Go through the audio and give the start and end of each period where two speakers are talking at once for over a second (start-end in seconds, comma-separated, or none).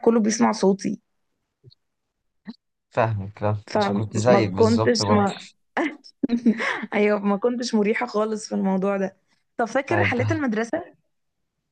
3.7-5.3